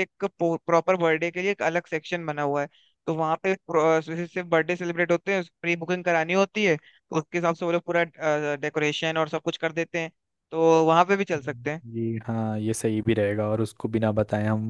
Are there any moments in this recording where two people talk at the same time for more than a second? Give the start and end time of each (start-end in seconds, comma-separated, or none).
none